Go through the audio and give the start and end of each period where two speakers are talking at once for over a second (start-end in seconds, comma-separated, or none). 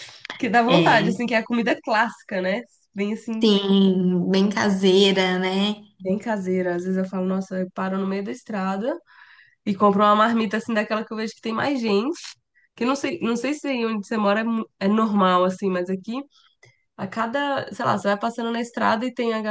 none